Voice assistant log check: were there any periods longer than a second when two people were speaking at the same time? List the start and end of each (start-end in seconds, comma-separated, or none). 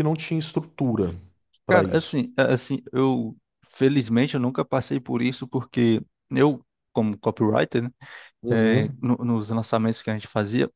none